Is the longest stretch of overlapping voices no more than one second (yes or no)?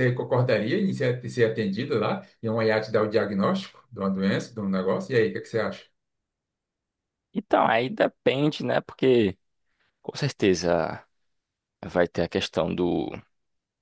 yes